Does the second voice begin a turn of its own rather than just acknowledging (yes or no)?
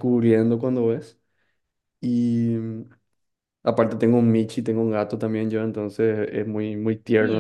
no